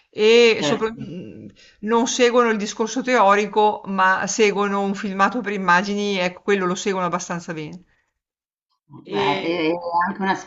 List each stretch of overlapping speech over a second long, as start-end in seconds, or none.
none